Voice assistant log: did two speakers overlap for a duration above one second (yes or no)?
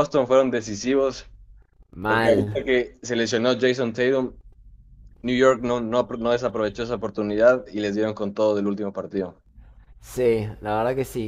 no